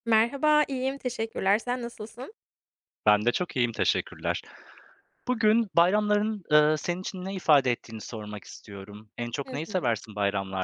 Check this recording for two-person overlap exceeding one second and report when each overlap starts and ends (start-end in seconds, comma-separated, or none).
none